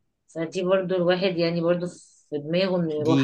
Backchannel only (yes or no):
no